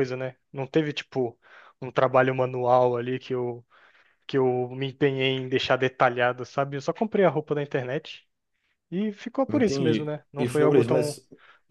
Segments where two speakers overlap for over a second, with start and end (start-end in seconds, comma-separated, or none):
9.5-11.2